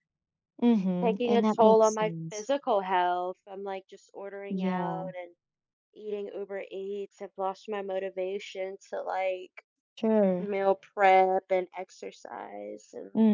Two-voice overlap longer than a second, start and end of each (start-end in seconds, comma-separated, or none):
1.0-2.5